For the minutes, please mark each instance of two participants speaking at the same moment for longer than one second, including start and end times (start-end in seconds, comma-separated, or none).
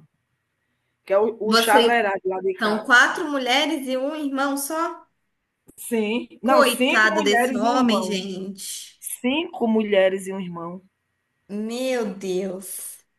6.4-8.2